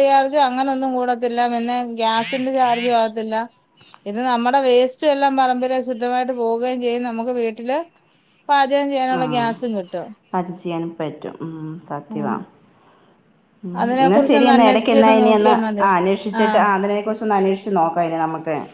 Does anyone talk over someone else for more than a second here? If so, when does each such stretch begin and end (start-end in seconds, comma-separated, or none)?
13.8-15.5